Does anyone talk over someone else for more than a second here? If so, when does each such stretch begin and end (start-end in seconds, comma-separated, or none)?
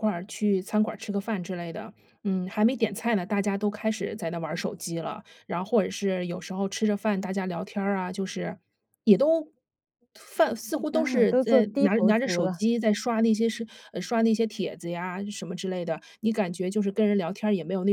10.9-12.6